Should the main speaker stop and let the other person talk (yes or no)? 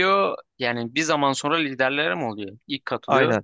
yes